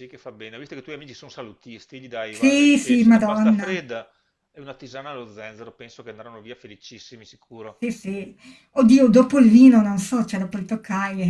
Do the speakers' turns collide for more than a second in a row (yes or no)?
yes